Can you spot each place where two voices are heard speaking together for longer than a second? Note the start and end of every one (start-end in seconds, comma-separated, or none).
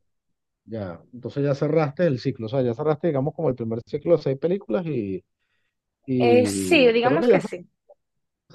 6.2-7.4